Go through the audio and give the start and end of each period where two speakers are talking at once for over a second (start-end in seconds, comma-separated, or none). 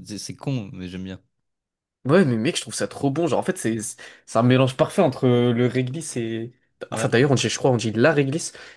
none